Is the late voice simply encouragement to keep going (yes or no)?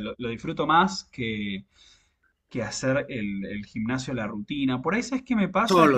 yes